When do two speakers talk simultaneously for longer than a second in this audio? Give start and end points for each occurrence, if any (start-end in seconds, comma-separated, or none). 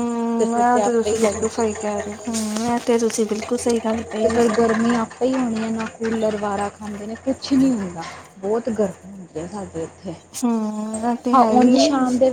0.5-2.0